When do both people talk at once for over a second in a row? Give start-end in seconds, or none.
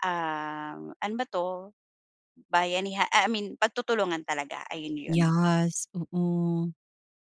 none